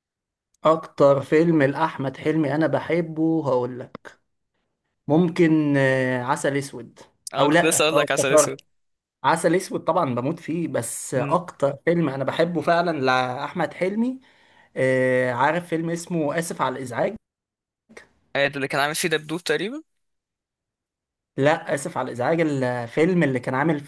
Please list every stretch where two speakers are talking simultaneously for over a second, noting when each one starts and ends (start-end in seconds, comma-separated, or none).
7.4-8.6